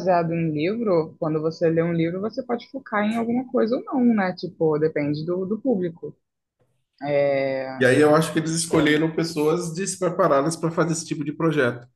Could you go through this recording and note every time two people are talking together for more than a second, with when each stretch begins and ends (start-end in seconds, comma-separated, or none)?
none